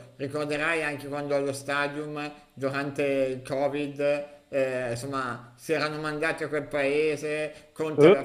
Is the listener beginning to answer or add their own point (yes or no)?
no